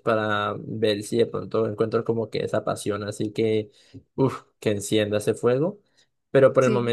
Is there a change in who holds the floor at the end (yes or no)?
no